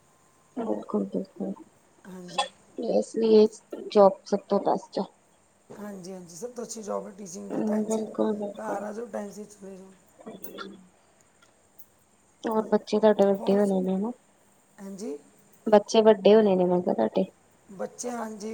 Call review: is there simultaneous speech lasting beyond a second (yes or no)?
no